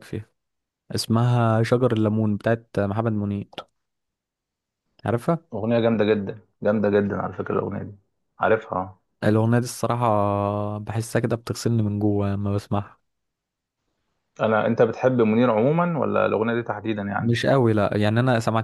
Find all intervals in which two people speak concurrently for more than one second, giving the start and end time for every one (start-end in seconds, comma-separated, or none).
none